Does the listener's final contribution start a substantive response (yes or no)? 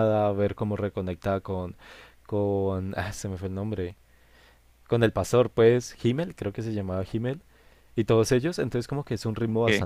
no